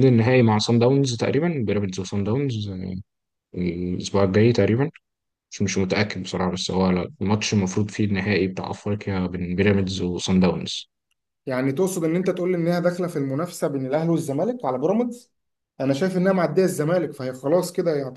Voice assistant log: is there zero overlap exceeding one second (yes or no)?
yes